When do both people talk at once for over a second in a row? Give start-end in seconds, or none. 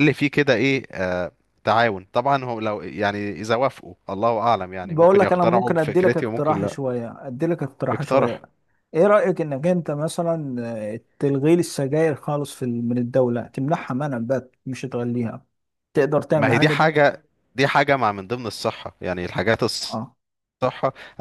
4.8-6.8